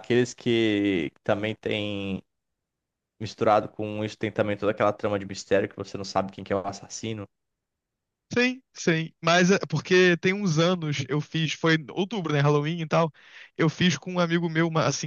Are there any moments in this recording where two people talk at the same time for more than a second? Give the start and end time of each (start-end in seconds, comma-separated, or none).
none